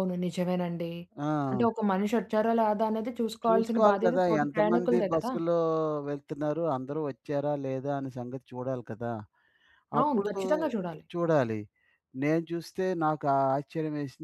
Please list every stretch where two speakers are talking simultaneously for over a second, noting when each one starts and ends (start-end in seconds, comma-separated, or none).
3.5-5.3